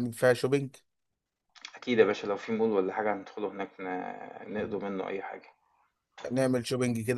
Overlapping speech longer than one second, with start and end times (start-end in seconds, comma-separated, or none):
none